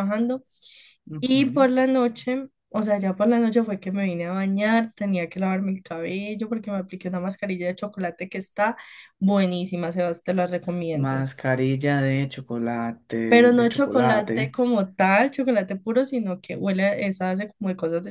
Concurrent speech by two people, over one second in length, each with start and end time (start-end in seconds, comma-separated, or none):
13.3-14.6